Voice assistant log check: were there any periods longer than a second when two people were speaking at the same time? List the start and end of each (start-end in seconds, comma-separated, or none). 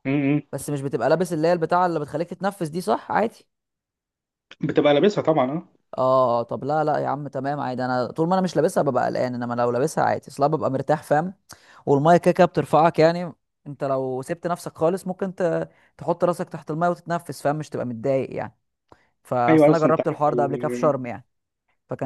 19.5-20.9